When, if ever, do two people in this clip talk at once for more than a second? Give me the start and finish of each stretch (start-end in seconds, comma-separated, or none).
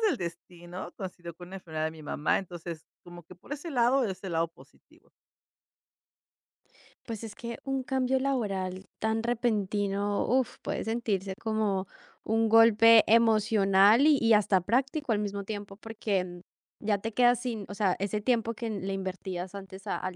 none